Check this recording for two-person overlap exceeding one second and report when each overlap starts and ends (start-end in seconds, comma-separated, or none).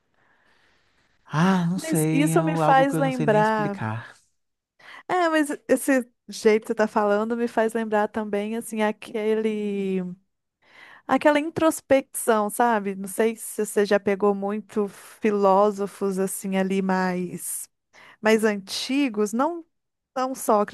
1.8-3.8